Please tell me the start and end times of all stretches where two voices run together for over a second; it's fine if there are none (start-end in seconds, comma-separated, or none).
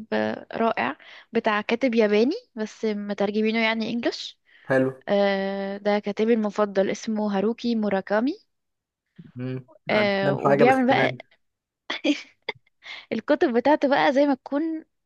9.9-11.2